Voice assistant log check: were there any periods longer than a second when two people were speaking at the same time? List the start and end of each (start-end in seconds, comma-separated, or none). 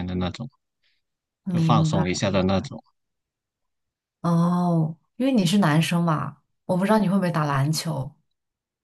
none